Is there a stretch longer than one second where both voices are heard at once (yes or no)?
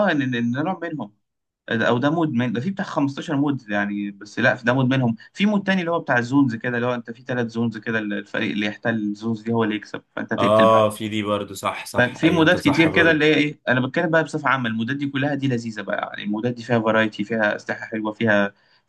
yes